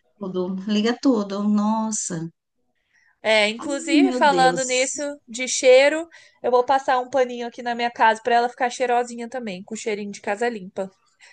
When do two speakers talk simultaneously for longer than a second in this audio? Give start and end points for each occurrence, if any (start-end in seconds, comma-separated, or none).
3.6-5.0